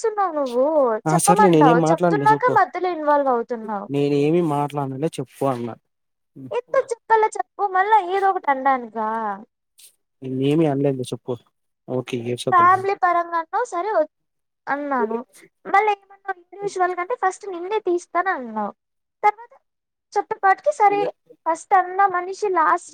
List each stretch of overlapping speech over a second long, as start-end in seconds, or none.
1.1-2.5